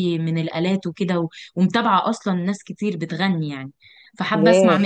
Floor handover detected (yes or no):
no